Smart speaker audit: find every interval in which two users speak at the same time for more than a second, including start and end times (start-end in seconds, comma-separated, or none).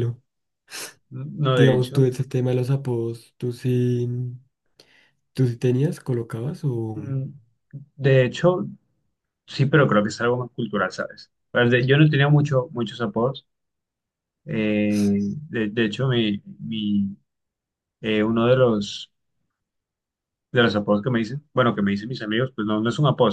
none